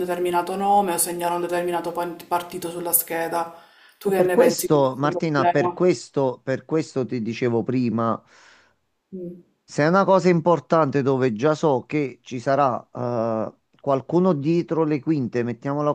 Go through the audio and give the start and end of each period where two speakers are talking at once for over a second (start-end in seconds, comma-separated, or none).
4.0-5.8